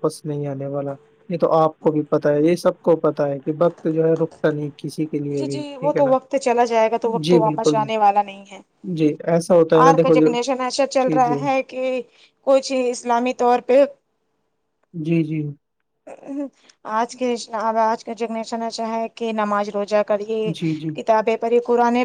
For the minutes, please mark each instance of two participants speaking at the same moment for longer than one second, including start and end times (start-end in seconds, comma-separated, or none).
none